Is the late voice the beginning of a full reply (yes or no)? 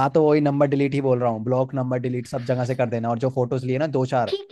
yes